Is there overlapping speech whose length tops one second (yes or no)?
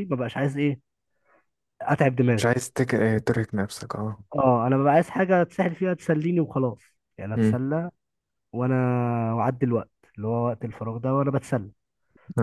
no